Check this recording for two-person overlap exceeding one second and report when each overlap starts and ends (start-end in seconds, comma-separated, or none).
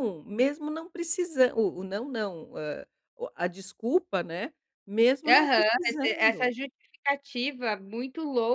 5.2-6.5